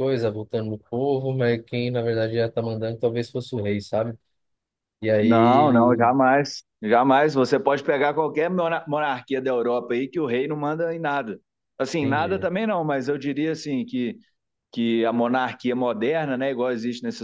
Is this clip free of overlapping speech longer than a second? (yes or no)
yes